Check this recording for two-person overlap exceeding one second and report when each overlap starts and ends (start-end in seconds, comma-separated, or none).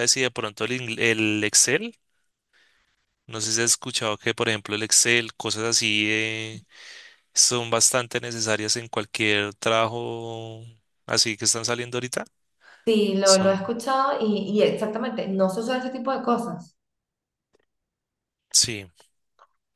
none